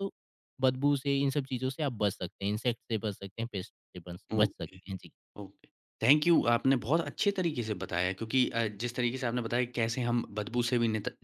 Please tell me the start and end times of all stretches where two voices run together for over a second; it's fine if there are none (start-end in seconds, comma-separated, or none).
none